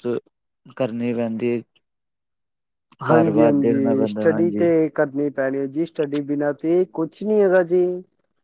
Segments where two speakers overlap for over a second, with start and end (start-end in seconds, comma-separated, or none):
3.1-4.7